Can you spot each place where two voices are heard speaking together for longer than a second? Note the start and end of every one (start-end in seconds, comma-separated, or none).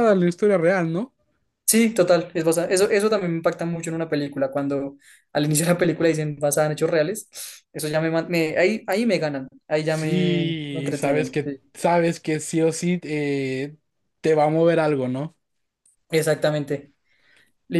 9.8-11.6